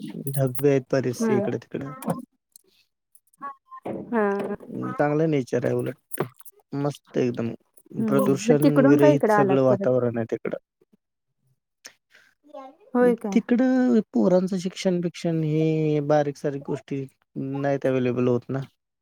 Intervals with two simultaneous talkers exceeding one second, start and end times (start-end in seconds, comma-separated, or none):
8.1-9.9